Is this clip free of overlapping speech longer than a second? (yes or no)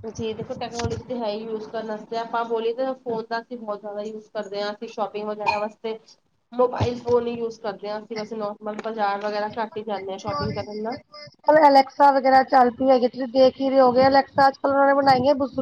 yes